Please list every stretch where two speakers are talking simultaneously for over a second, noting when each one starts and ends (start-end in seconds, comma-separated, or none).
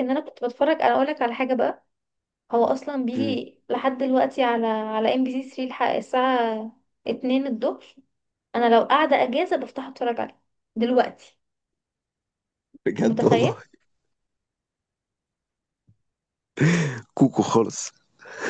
none